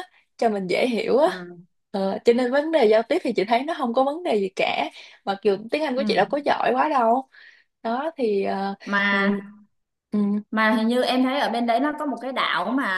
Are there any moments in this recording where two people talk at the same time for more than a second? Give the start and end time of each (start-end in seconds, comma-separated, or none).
none